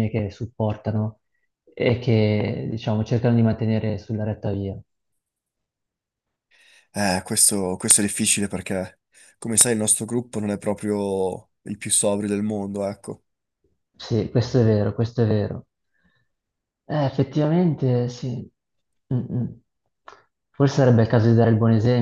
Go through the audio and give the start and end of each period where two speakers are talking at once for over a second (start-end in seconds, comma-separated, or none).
none